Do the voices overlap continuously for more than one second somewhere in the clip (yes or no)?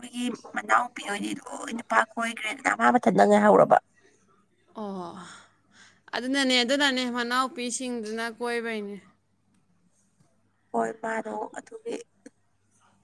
no